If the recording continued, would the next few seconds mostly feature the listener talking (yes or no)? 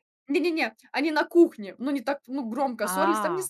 no